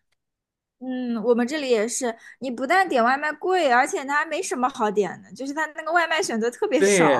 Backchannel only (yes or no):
no